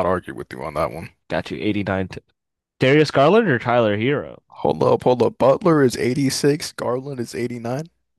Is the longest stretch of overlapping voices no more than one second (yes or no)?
yes